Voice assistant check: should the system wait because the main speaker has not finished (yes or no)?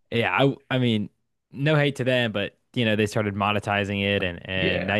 yes